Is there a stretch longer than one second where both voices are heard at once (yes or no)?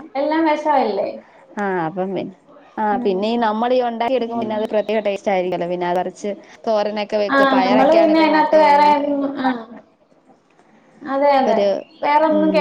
yes